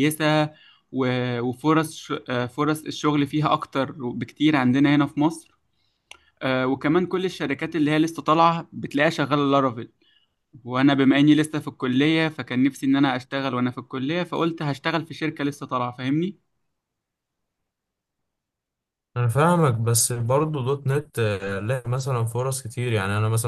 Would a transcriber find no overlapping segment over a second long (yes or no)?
yes